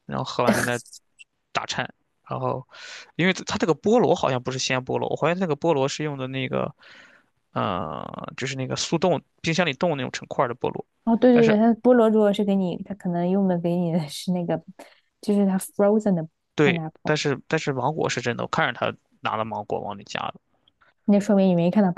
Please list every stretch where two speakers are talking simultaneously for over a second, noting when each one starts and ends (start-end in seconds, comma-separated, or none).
none